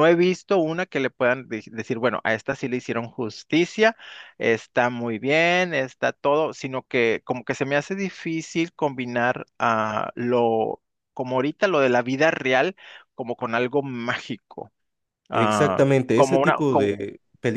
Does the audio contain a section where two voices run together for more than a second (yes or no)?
yes